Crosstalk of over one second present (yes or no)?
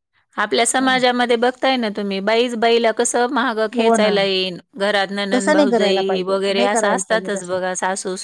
yes